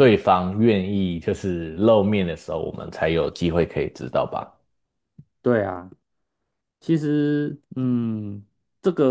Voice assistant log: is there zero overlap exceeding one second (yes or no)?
yes